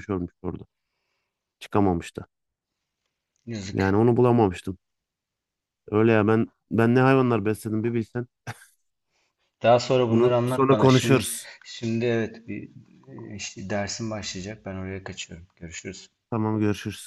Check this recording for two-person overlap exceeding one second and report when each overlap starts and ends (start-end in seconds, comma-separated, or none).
10.1-11.3